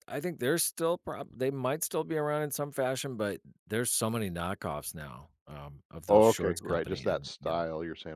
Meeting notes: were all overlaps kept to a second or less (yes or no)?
no